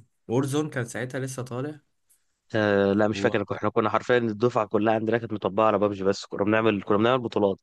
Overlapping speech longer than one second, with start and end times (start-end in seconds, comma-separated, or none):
none